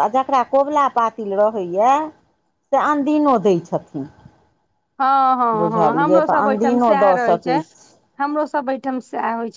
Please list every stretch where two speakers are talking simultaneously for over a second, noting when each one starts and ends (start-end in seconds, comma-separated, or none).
5.5-7.5